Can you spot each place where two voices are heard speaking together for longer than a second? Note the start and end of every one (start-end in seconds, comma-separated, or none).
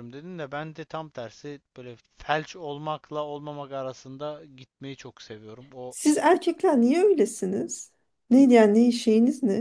none